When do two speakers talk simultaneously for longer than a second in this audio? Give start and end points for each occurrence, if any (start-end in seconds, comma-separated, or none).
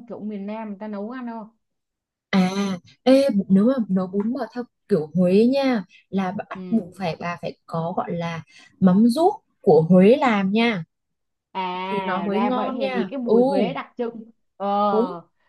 11.8-13.3